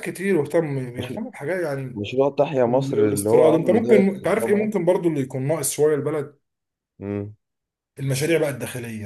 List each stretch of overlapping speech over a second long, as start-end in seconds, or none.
2.6-4.7